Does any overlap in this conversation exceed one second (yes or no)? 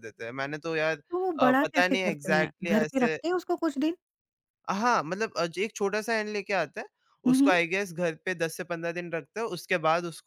yes